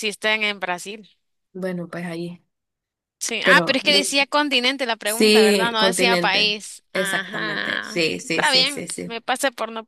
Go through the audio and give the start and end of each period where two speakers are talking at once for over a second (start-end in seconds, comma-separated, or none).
5.0-9.2